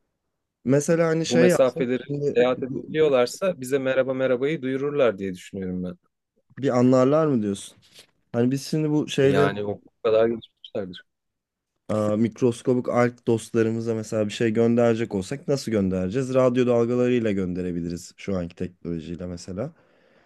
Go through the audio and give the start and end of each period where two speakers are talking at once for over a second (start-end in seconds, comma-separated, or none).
1.2-3.0